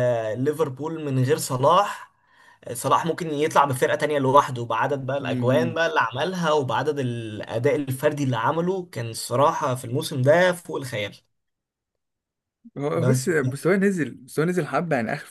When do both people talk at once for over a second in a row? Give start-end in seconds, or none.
none